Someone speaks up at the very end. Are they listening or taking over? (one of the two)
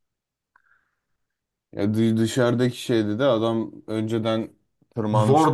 taking over